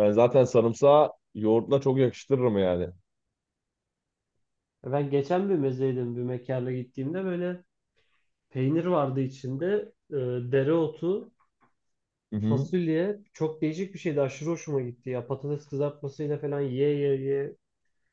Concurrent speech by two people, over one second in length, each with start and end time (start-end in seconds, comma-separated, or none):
none